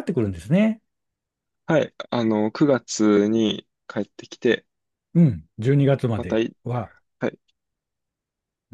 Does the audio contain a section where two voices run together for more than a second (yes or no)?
no